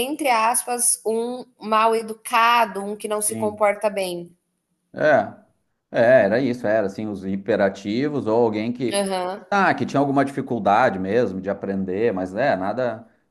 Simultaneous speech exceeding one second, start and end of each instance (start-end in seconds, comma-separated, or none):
none